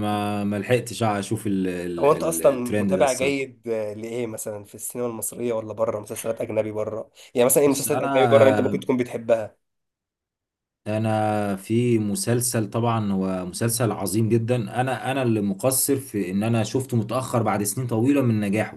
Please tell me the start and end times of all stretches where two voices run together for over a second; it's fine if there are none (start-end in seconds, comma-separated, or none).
2.0-3.5, 7.7-8.9